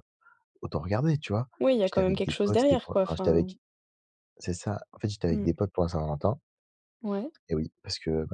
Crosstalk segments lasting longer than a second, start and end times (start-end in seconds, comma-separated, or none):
1.8-3.5